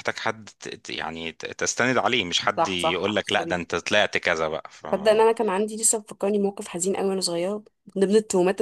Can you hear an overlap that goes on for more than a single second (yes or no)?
yes